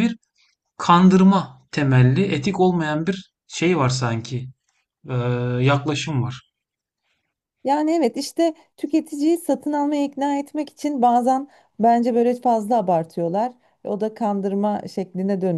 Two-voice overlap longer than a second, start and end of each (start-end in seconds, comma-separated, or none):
none